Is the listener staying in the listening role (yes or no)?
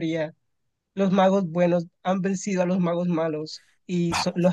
yes